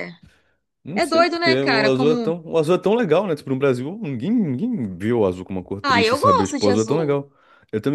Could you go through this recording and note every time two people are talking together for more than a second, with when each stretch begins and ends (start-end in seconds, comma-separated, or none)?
0.9-2.4, 5.8-7.2